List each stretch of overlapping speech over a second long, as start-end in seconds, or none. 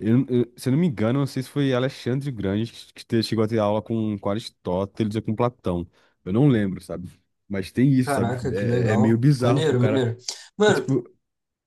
8.1-10.1